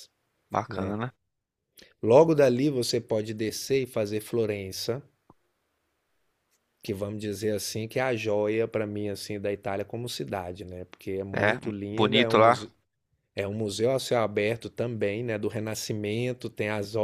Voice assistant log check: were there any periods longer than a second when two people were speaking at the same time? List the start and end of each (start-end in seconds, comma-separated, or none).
11.3-12.7